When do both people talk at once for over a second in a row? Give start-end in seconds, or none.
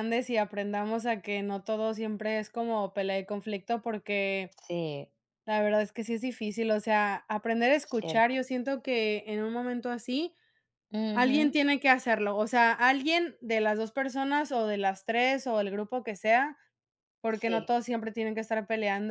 none